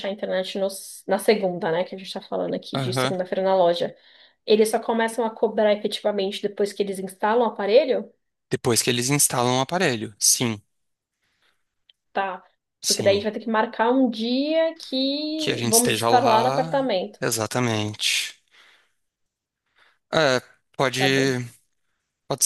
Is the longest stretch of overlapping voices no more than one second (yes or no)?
no